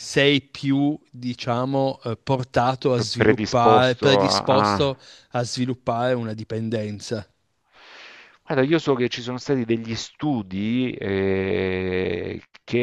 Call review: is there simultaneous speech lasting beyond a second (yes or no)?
yes